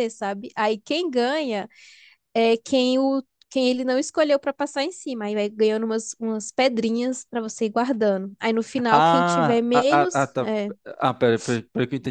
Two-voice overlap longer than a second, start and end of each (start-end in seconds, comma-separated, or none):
8.9-10.5